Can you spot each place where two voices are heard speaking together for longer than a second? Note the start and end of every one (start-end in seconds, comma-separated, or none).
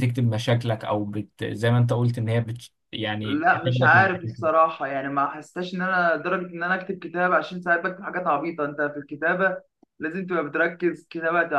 3.2-4.5